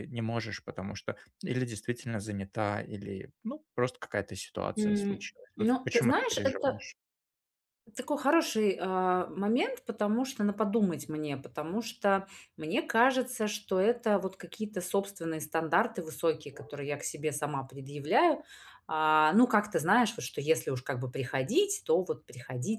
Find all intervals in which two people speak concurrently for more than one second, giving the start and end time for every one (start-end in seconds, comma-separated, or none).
4.8-6.8